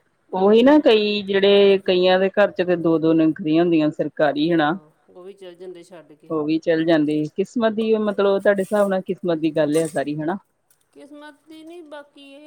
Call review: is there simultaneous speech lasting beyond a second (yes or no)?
no